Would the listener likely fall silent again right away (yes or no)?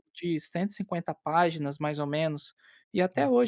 yes